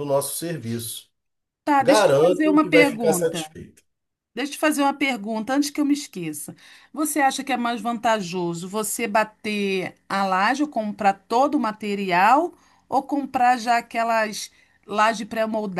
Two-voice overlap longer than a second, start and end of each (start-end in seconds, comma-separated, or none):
1.8-3.5